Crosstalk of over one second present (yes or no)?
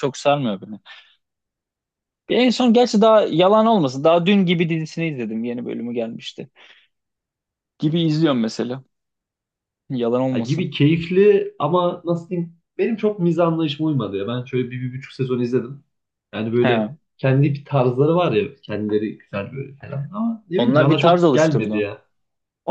yes